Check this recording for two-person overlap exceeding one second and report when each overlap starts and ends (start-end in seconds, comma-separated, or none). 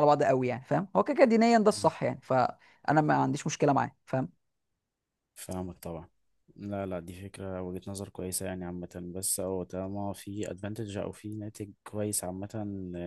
none